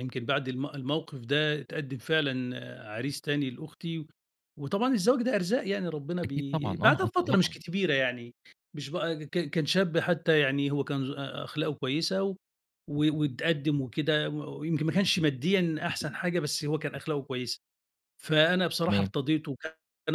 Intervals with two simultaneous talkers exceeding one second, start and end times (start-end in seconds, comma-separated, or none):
6.2-7.5